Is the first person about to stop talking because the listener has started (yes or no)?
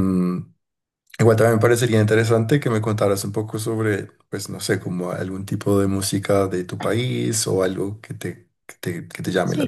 yes